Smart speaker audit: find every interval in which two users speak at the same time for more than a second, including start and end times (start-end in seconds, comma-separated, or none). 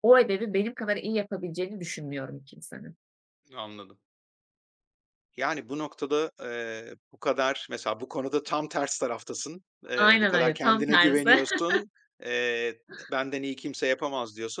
9.9-11.3